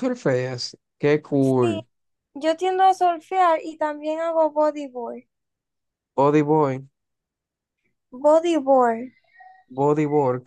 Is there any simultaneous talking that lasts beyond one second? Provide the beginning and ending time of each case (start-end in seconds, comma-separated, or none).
none